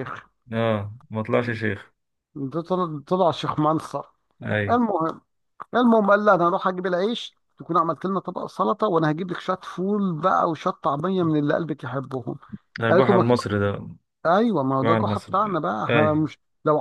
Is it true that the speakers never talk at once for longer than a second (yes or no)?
no